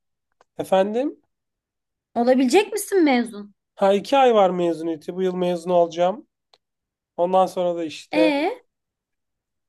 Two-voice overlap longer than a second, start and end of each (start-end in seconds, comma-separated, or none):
none